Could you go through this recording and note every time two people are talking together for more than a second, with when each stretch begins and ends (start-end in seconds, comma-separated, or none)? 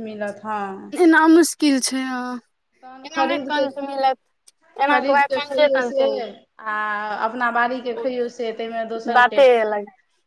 4.9-6.3